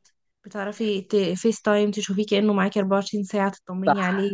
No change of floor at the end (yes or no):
no